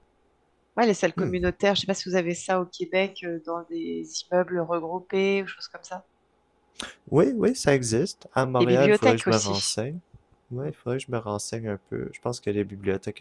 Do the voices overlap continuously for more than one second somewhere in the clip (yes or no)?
yes